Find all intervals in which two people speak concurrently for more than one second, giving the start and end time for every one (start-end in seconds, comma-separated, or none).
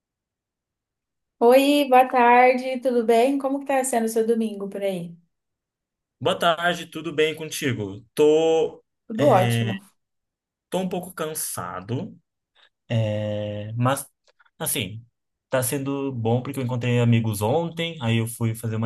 none